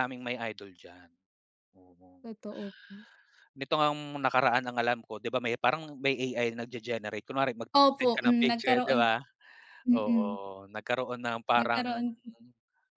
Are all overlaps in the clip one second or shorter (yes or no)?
no